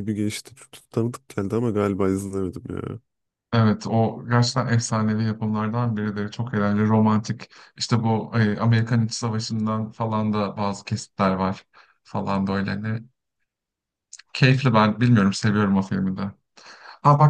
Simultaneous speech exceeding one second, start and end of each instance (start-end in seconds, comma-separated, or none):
none